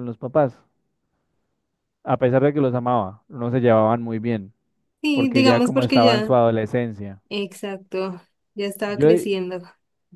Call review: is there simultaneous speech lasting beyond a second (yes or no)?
yes